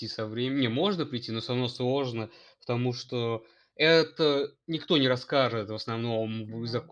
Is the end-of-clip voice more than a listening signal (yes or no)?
no